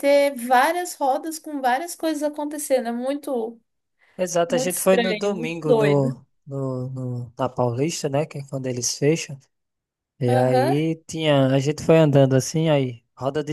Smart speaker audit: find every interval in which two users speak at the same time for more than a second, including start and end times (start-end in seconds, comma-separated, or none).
4.5-6.2